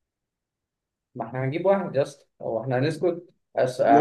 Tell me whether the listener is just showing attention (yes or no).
yes